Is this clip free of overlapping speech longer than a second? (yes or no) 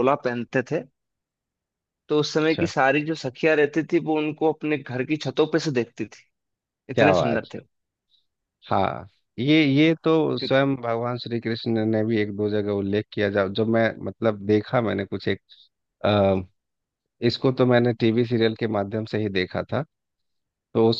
yes